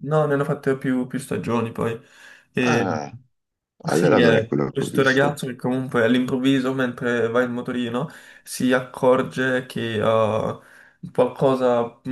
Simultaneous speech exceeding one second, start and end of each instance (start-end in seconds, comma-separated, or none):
3.9-5.4